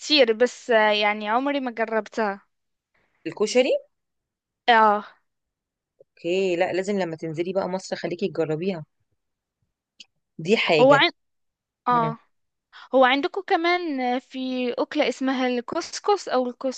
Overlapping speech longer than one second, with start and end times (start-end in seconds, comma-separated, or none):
none